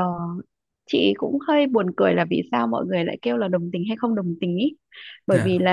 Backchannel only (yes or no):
yes